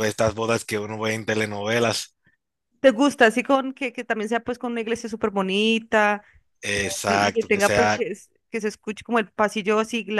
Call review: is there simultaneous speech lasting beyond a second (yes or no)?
yes